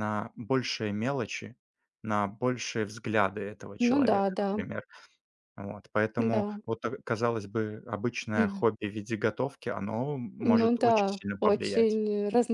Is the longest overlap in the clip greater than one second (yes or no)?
yes